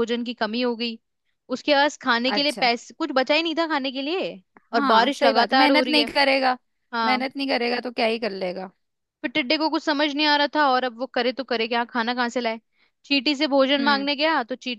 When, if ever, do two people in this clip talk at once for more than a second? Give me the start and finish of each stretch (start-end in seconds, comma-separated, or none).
4.7-6.1